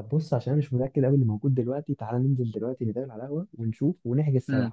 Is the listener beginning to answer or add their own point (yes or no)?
yes